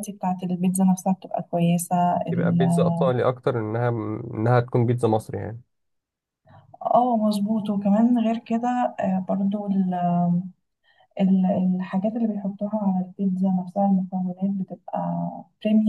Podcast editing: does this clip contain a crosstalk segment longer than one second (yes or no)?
no